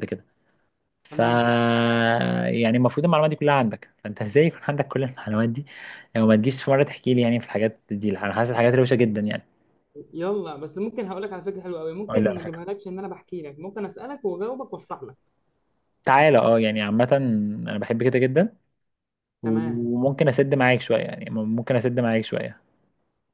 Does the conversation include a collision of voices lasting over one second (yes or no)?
no